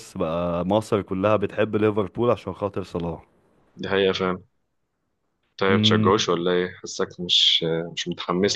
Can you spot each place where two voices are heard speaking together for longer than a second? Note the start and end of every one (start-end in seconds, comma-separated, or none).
none